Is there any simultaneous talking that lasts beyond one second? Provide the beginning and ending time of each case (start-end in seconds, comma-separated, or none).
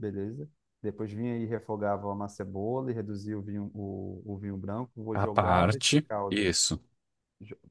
5.1-6.5